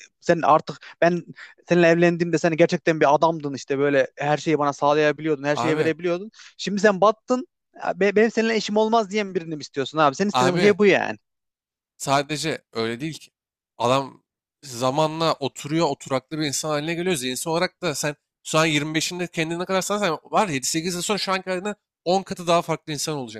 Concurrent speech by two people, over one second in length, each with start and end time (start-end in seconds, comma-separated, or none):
none